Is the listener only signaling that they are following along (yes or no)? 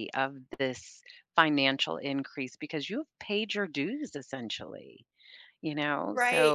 no